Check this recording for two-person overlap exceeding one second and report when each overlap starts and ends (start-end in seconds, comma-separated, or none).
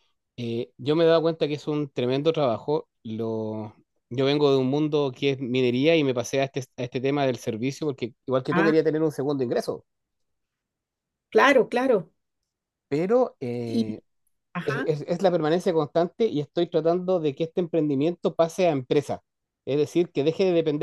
none